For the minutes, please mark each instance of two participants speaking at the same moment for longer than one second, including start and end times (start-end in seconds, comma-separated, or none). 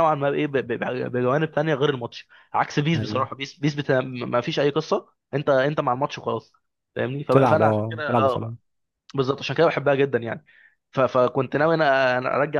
7.3-8.5